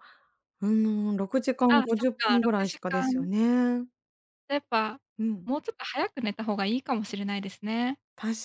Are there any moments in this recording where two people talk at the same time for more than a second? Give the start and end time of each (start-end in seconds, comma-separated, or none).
1.7-3.3